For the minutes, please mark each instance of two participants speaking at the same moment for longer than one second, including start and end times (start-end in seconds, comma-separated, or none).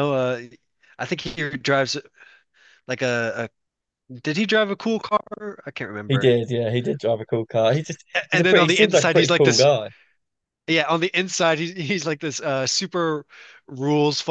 8.1-9.7